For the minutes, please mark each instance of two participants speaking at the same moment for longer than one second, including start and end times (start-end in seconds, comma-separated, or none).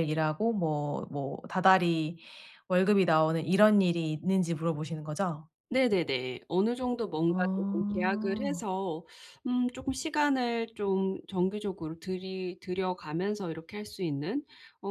7.3-8.7